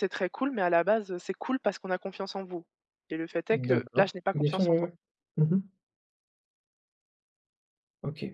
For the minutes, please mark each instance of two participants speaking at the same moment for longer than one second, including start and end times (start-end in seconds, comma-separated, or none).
3.5-4.9